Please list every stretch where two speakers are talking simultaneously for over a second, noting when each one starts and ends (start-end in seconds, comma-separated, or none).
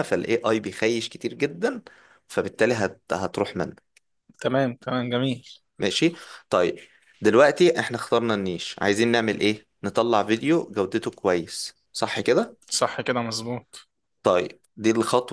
none